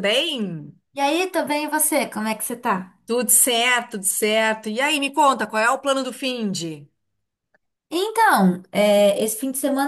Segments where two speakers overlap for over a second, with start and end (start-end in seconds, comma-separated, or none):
none